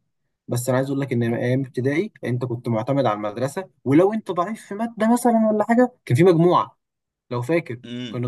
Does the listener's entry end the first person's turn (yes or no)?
yes